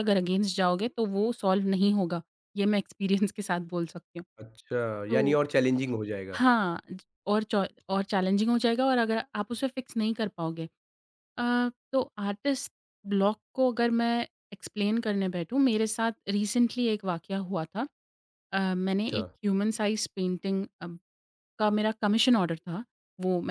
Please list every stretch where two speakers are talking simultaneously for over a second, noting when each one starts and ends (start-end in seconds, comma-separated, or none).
none